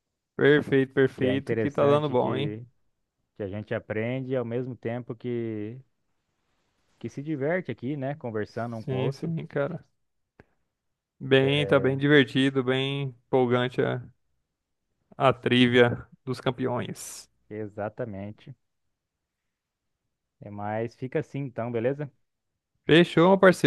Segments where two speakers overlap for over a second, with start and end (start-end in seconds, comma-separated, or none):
1.1-2.6